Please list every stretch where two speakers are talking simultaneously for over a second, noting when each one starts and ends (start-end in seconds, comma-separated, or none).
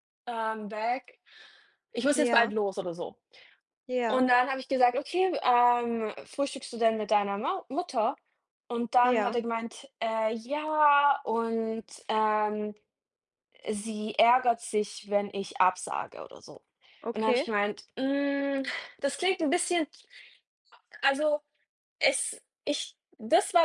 none